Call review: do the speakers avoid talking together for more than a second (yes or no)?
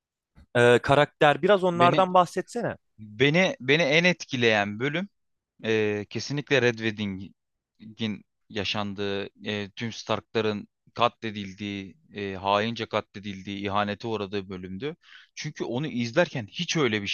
yes